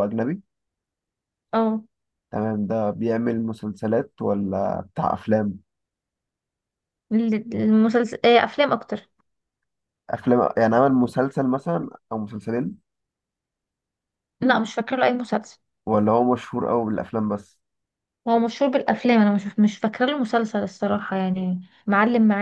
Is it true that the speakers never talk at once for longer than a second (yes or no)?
yes